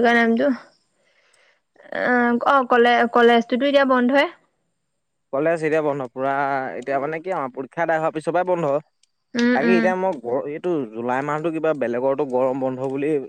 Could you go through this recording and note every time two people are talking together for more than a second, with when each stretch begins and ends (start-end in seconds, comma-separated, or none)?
none